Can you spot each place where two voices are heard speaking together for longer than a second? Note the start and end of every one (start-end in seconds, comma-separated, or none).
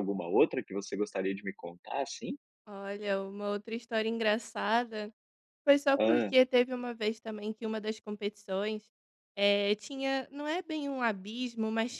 none